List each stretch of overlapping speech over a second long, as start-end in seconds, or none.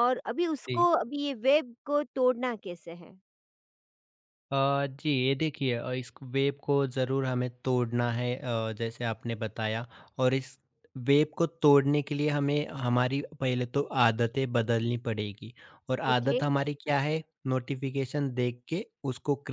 none